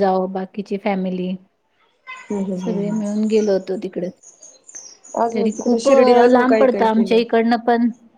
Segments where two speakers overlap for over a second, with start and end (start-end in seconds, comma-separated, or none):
5.3-7.2